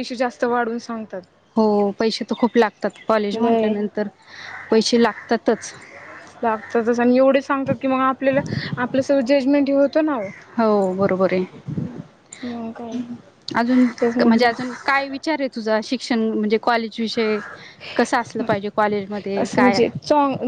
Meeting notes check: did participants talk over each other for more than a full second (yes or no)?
no